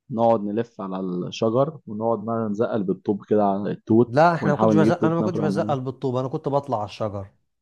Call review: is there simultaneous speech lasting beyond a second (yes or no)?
yes